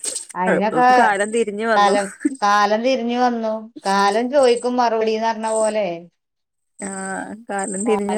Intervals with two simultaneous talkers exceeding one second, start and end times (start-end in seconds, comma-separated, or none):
none